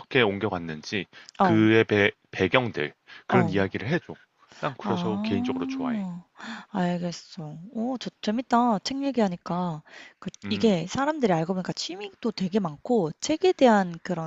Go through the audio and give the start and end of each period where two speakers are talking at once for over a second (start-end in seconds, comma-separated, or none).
4.8-6.0